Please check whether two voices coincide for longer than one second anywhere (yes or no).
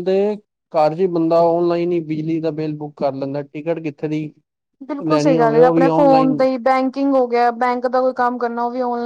yes